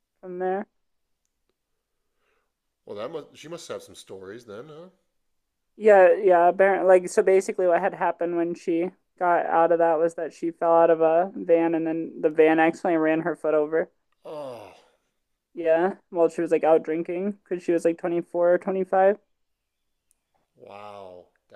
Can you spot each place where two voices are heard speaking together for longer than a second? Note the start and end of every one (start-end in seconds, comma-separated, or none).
none